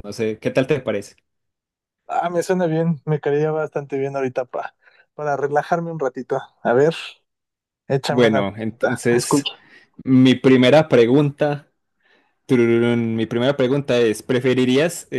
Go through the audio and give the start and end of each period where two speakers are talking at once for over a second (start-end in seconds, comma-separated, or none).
8.1-9.5